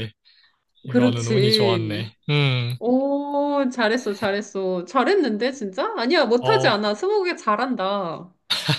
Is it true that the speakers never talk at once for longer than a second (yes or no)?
no